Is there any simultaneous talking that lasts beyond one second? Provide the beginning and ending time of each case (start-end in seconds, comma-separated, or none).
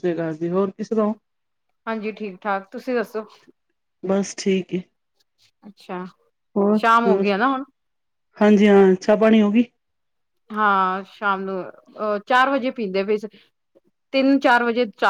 none